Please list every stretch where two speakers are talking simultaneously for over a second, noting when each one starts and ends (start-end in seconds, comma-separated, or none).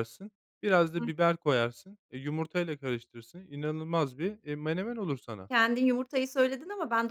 none